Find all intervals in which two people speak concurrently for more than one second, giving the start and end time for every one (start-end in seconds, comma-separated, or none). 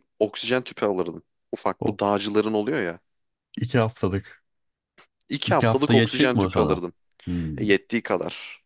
5.5-6.8